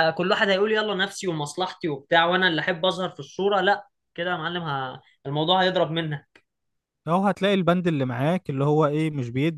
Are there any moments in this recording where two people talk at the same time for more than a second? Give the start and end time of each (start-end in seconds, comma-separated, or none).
none